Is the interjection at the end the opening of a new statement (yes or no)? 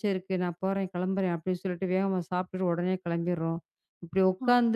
no